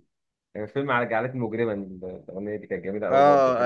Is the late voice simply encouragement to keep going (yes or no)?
no